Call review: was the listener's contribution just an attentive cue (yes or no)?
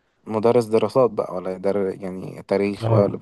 no